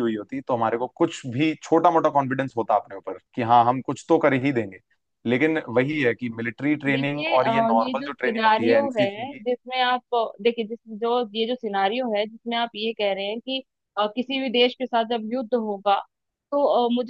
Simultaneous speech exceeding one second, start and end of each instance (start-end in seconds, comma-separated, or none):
6.9-9.4